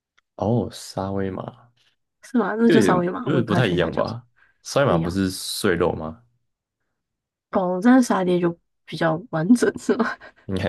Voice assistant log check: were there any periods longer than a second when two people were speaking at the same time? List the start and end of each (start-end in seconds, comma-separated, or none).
2.6-4.2